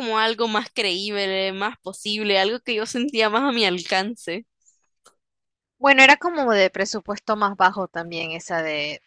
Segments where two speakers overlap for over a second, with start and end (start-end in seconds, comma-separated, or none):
none